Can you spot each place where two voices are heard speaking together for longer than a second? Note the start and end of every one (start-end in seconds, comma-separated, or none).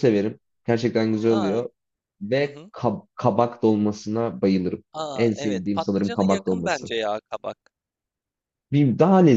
4.9-6.9